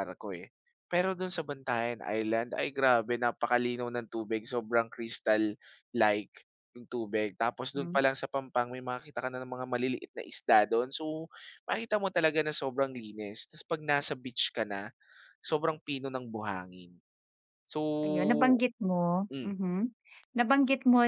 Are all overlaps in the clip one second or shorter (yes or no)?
yes